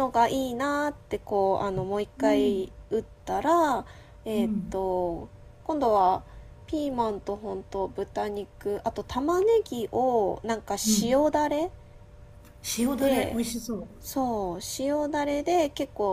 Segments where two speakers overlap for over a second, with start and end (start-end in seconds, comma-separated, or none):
none